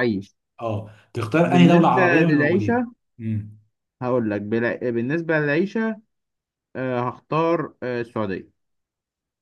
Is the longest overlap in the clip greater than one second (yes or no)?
yes